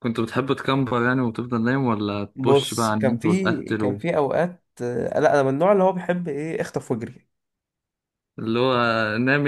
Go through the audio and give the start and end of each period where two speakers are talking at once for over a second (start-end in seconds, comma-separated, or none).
2.4-4.0